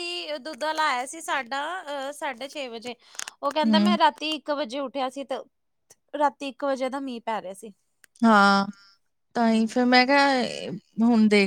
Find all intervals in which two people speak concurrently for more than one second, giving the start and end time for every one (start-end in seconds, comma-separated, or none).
none